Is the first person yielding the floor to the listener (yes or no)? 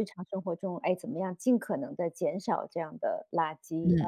no